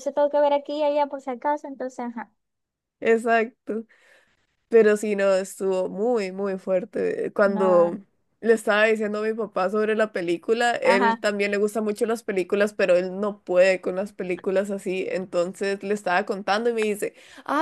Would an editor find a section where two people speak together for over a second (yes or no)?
no